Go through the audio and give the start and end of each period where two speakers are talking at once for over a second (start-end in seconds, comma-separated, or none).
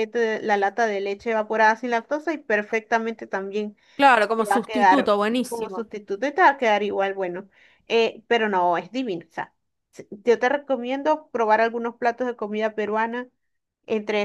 4.4-5.9